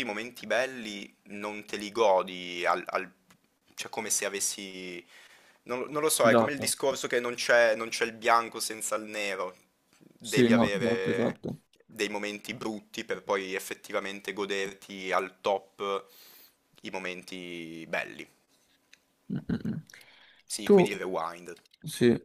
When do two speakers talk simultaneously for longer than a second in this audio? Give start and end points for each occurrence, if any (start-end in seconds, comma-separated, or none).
10.2-11.4